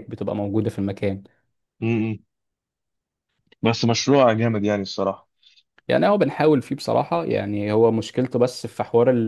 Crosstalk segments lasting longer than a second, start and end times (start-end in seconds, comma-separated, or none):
none